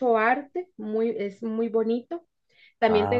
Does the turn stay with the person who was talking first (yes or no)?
yes